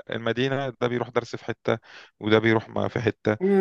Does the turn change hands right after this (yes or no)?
yes